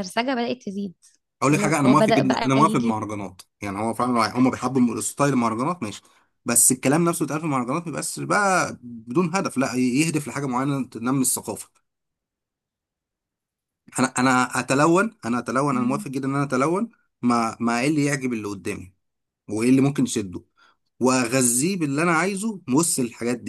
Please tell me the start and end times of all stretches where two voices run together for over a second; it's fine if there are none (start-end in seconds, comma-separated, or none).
1.5-3.0